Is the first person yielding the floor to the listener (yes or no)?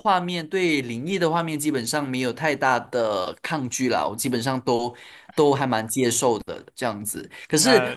no